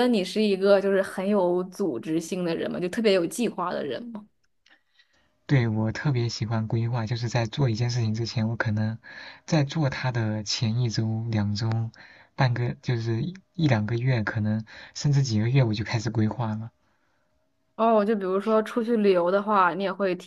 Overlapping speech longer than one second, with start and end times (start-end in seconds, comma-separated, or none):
none